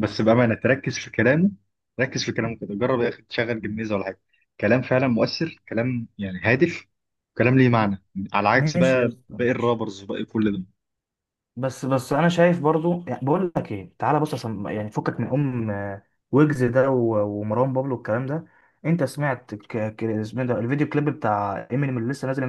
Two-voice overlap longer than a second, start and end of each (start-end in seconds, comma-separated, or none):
8.6-9.8